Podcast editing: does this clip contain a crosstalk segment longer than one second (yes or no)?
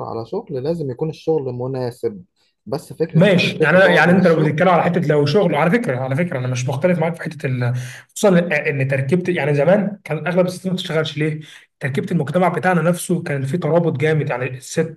yes